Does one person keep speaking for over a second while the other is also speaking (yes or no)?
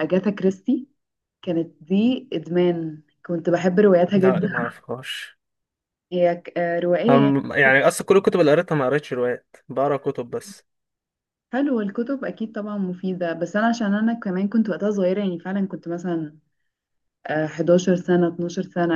no